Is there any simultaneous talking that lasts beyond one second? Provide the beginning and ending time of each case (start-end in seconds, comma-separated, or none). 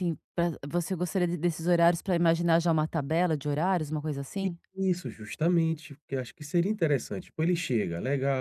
none